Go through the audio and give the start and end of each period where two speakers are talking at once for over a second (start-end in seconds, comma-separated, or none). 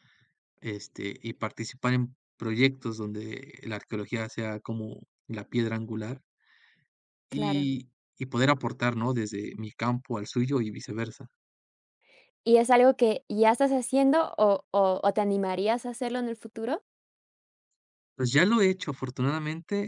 none